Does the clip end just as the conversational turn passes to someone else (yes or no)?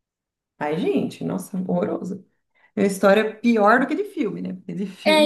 yes